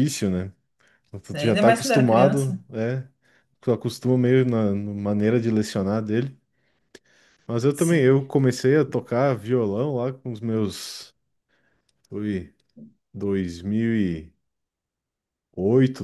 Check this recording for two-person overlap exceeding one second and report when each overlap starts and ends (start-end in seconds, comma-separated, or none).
1.3-2.6